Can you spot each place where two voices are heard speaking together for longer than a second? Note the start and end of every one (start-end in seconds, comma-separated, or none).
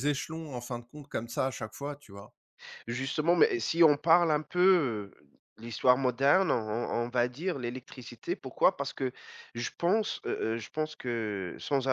none